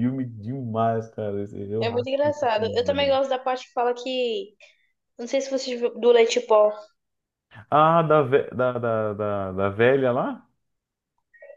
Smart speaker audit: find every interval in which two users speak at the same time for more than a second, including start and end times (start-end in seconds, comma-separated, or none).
1.8-3.1